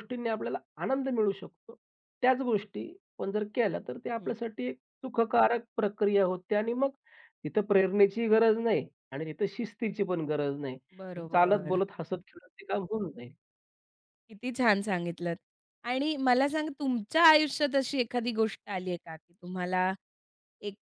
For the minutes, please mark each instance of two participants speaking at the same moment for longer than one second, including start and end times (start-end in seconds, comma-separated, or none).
none